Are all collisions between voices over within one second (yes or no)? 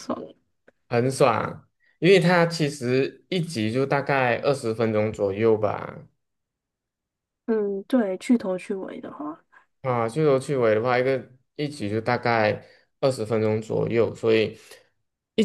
yes